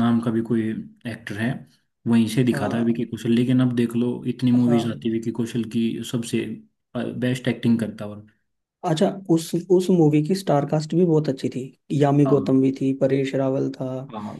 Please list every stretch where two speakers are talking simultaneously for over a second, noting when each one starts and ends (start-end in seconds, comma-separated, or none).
none